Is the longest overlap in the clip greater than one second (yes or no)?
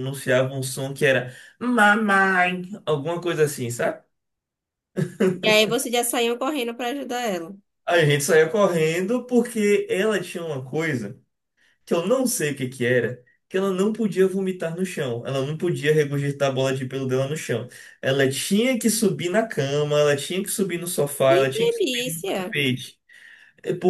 yes